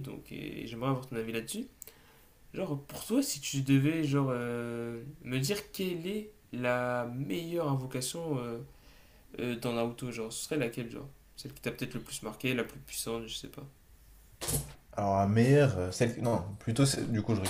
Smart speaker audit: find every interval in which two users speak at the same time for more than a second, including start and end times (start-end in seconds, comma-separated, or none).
none